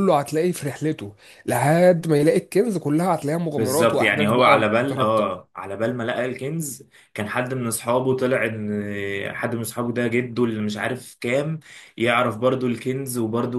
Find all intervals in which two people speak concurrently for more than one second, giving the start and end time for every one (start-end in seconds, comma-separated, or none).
3.6-5.4